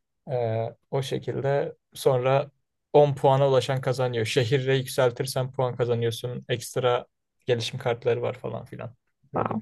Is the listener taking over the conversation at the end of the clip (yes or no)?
yes